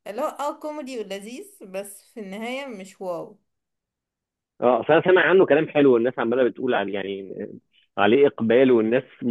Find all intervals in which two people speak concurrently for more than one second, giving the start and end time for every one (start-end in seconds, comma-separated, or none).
none